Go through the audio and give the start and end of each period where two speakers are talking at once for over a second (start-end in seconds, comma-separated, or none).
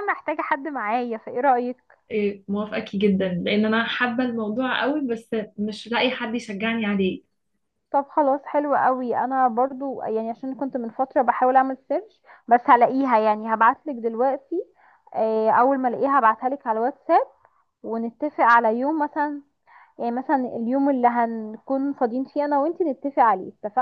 none